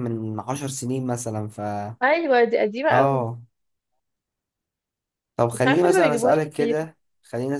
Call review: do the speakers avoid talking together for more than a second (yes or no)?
no